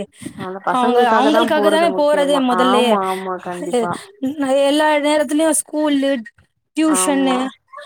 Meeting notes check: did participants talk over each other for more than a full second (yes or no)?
yes